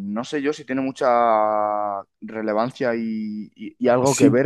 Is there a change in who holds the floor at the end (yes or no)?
no